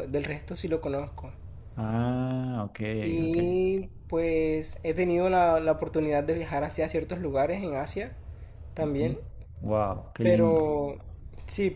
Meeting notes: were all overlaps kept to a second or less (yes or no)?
yes